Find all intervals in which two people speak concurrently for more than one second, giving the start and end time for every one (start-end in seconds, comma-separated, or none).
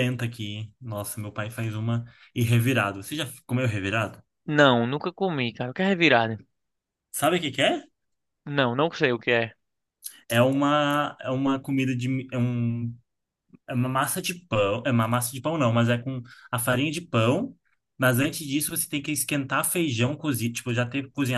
none